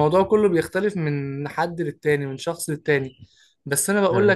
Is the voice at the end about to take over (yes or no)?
no